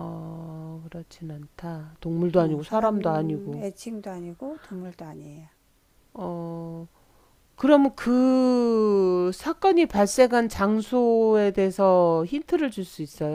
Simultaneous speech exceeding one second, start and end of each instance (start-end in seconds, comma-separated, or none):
2.4-3.6